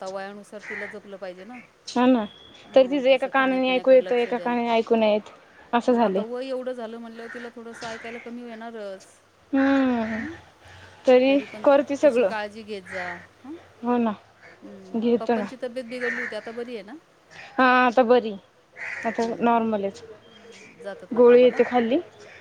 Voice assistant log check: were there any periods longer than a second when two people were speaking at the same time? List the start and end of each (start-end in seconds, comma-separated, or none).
2.7-4.5